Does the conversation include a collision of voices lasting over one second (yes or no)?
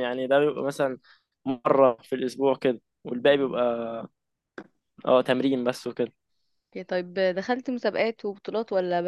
no